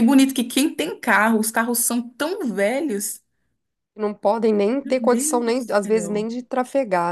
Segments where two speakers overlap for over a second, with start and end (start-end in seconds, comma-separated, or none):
4.8-6.3